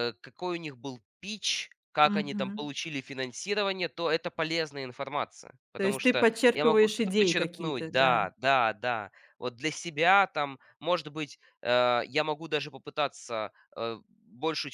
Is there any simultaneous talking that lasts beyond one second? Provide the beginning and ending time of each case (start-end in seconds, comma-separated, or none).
5.8-8.3